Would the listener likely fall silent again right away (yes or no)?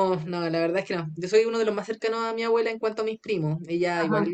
yes